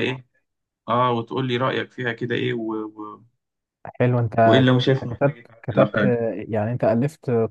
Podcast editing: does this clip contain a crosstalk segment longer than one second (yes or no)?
yes